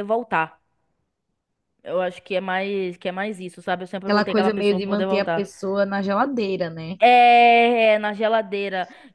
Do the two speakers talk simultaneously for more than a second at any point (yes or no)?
yes